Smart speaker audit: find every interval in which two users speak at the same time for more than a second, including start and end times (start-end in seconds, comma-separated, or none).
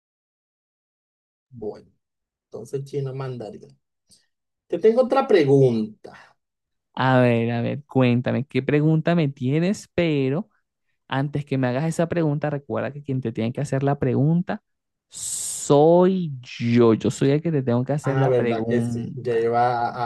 18.0-19.5